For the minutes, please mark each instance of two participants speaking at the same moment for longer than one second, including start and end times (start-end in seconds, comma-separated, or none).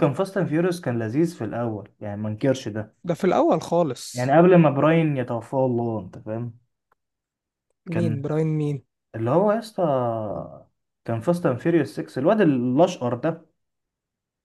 none